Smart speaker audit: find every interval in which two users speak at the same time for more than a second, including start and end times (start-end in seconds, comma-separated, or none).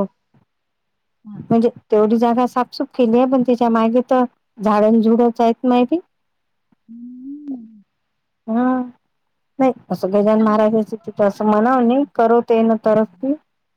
10.4-11.8